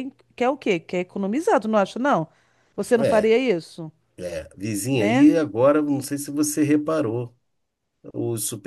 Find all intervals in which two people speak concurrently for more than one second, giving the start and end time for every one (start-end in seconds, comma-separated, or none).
none